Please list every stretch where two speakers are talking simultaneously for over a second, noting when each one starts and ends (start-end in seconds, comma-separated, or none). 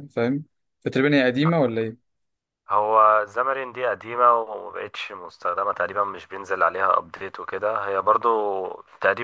none